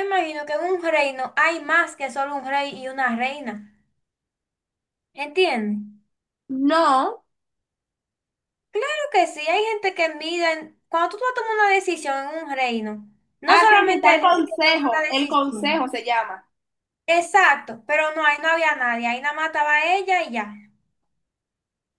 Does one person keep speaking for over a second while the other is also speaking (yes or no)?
yes